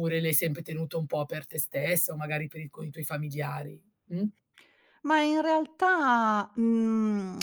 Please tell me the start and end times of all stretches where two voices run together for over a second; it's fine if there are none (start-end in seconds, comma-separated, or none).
none